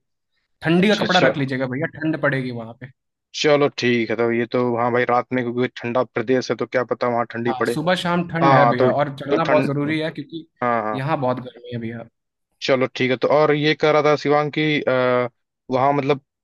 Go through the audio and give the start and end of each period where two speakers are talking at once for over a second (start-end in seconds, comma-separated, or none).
8.4-9.7